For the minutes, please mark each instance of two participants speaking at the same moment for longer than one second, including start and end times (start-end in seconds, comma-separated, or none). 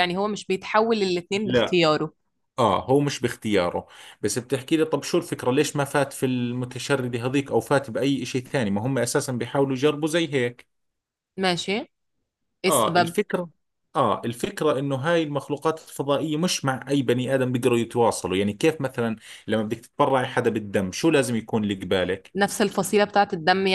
none